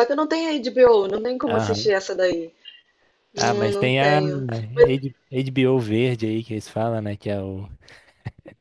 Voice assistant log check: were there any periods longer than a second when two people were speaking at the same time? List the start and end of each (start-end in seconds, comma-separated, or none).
3.4-4.9